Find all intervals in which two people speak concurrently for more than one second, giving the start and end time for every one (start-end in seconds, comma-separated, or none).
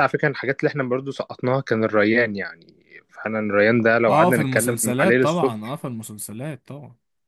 4.0-5.8